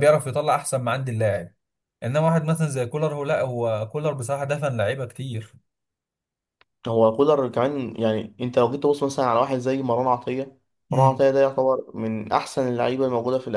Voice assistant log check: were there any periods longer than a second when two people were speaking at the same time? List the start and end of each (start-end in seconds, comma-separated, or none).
none